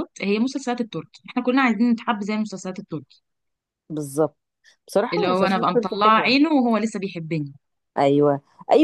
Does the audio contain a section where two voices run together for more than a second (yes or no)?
yes